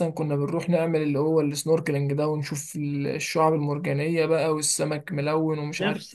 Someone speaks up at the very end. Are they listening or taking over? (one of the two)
taking over